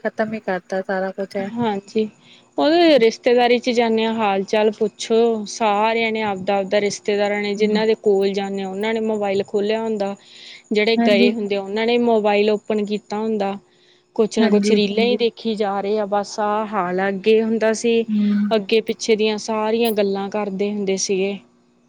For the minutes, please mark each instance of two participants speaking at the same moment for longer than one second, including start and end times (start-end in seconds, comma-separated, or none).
none